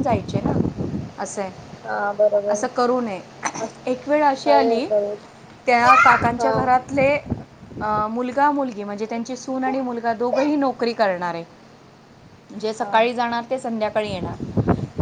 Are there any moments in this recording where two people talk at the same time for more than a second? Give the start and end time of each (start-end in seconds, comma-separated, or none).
none